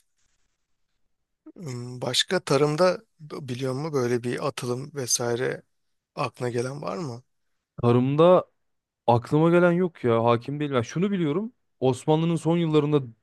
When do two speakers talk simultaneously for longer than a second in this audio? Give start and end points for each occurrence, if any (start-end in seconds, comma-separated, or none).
none